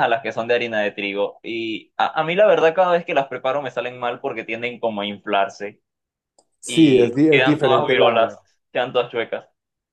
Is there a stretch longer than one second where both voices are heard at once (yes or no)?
yes